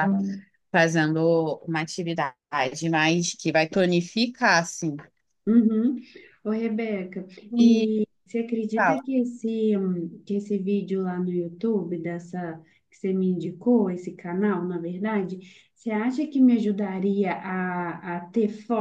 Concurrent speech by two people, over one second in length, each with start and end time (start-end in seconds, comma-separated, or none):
none